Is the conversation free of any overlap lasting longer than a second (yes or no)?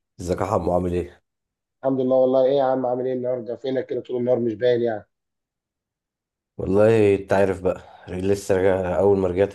yes